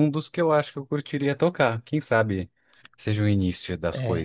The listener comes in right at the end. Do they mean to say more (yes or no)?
yes